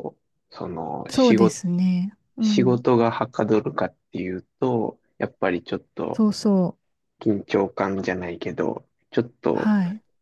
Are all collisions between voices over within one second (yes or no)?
yes